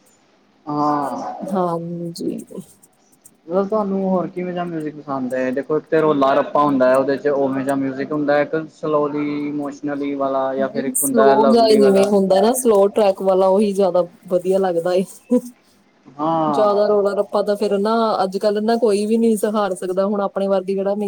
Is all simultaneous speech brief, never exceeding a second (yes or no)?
no